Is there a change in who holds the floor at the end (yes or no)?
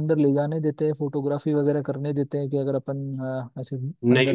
yes